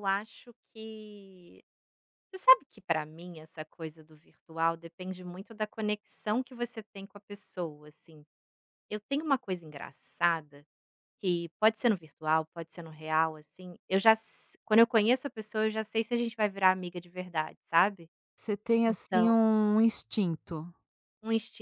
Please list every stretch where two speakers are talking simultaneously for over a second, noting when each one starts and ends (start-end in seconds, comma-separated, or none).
none